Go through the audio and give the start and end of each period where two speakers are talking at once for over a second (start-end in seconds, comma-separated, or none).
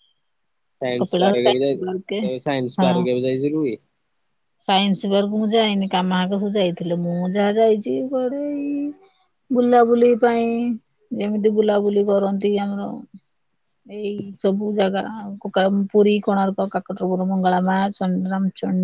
1.0-2.2